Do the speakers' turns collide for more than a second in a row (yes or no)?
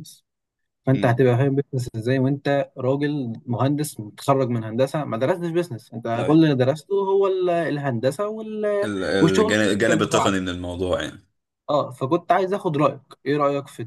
yes